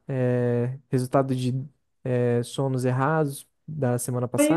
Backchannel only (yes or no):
no